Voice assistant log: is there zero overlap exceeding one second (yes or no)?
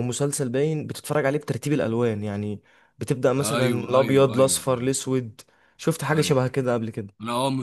no